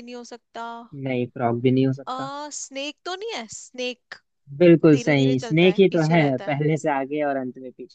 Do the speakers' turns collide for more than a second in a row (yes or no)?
yes